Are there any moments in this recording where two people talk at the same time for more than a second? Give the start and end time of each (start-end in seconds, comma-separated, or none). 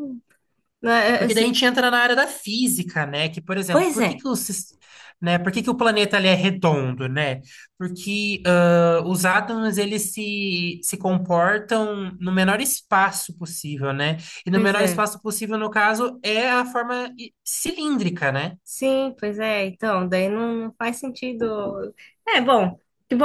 none